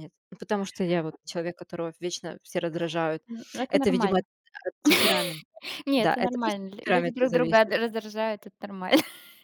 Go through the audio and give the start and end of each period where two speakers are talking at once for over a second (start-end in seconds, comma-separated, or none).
6.0-7.8